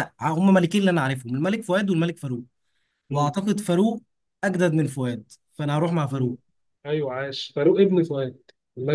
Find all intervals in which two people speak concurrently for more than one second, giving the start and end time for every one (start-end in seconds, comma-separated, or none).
none